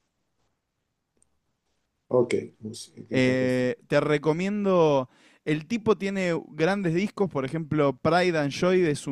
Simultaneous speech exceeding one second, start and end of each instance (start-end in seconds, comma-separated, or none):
none